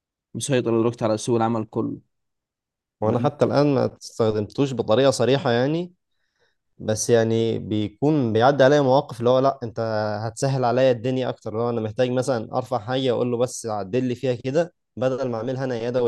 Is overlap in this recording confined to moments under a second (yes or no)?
yes